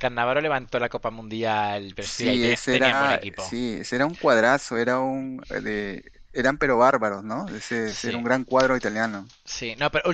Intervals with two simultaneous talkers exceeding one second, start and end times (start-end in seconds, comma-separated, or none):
2.0-3.5